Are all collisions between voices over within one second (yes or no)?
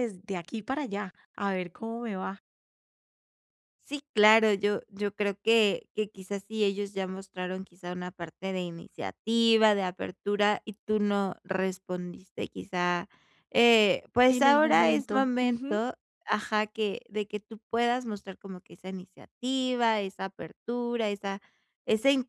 no